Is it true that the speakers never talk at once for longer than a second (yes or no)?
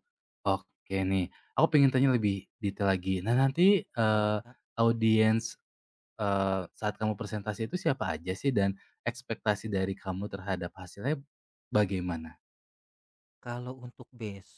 yes